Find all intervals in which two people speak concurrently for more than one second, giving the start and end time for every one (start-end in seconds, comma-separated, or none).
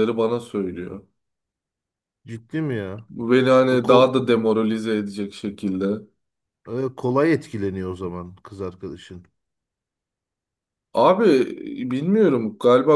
none